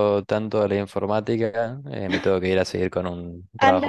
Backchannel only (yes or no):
no